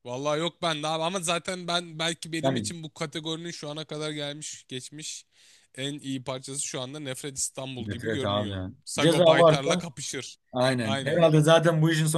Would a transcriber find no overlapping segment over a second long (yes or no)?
no